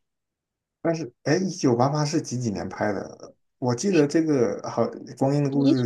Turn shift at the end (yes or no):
no